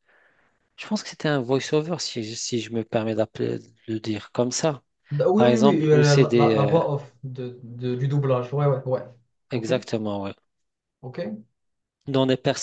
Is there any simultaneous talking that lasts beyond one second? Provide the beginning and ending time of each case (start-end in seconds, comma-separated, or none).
5.3-6.8